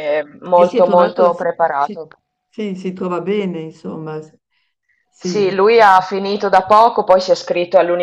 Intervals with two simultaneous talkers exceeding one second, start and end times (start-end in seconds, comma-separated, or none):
0.6-2.0